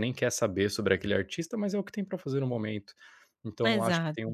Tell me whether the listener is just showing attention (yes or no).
yes